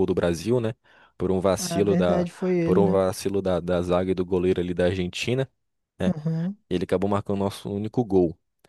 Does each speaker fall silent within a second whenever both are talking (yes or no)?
no